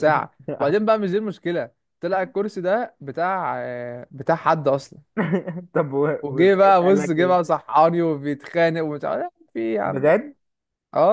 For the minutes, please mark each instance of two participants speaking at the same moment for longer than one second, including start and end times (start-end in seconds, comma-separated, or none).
6.2-7.5